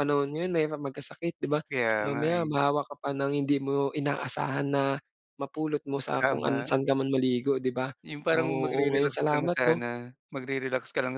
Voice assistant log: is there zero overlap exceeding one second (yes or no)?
no